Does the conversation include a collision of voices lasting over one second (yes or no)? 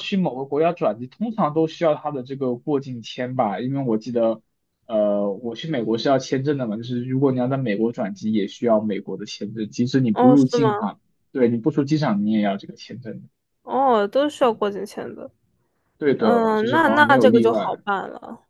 yes